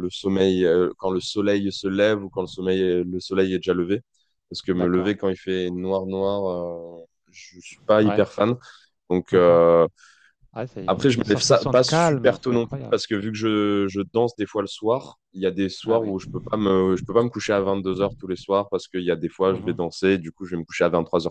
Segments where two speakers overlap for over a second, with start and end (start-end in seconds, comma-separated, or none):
10.8-13.0